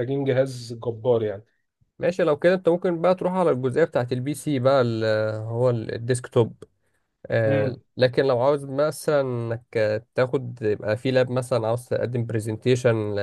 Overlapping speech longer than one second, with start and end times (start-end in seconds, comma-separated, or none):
none